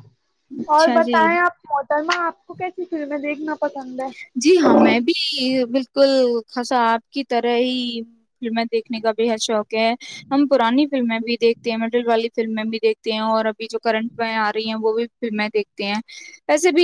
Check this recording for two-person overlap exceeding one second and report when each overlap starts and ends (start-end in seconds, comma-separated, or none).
none